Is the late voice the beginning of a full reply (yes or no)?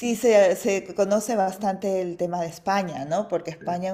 no